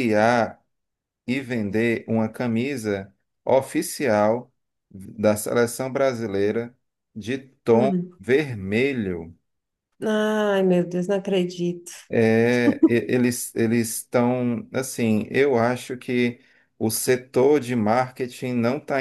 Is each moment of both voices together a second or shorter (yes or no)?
yes